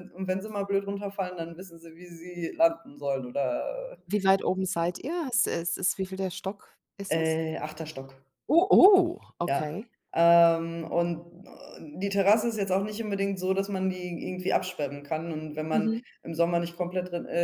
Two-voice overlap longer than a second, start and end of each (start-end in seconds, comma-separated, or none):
none